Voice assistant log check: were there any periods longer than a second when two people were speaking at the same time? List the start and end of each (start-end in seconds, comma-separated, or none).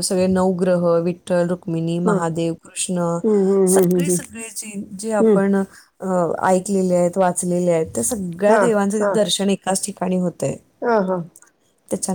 none